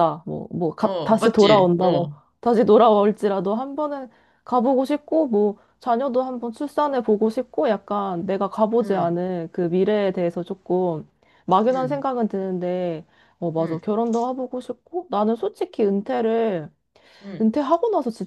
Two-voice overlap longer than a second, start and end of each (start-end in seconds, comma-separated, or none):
0.8-2.1